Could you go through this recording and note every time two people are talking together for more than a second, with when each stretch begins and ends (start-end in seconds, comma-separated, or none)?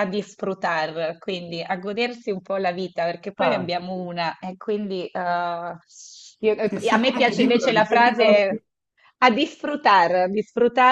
6.6-8.4